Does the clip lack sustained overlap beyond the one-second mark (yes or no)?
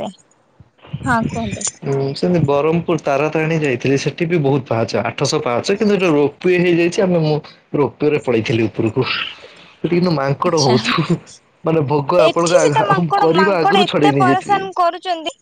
no